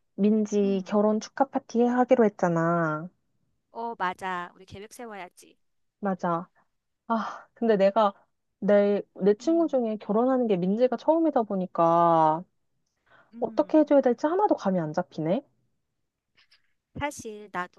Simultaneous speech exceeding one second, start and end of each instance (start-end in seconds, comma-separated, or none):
none